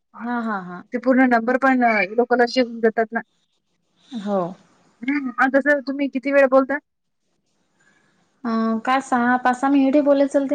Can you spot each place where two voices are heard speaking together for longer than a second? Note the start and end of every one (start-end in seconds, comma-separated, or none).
none